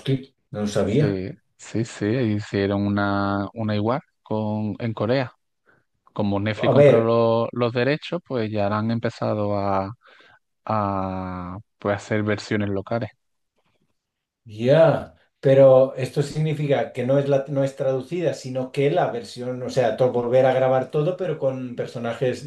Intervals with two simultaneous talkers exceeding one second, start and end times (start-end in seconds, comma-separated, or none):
none